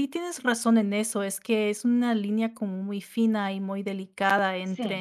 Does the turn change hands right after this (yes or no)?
no